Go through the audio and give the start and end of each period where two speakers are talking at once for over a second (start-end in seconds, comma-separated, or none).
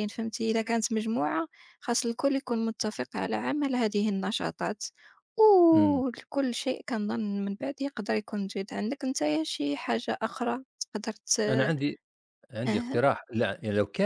none